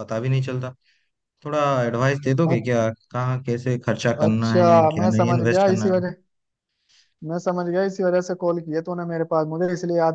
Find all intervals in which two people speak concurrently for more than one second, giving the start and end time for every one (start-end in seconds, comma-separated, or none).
4.2-5.9